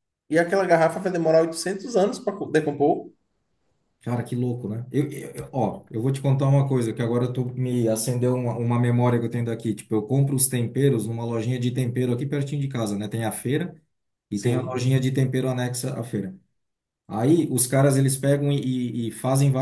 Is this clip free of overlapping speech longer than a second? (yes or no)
yes